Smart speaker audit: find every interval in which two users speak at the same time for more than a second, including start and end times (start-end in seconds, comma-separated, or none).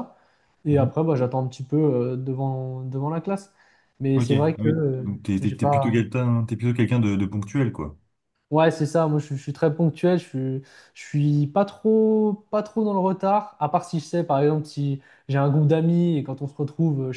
4.1-6.0